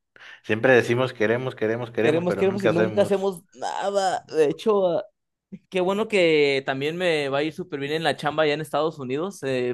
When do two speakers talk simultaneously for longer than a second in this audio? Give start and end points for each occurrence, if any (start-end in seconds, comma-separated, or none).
2.0-3.3